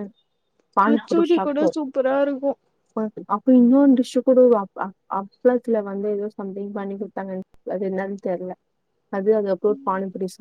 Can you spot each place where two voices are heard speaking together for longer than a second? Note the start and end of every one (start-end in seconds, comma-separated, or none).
none